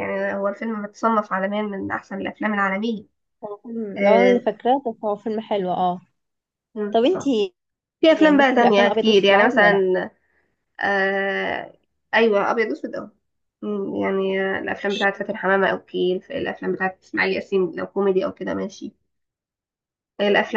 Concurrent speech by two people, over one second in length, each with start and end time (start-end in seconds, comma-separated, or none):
8.1-9.8